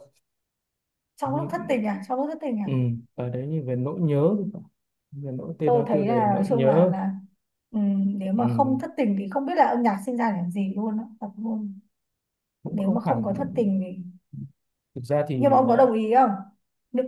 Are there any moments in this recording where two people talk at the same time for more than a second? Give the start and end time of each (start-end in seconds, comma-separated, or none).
5.6-6.9